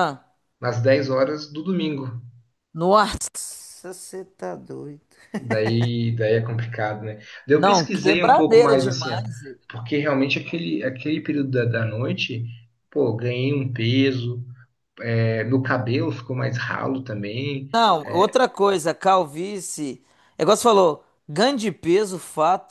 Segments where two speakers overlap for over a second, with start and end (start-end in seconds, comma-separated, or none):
7.5-9.2